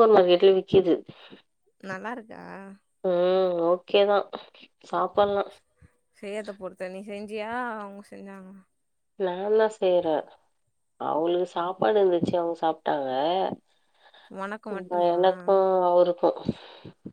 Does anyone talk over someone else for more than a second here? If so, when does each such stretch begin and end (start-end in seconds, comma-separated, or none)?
none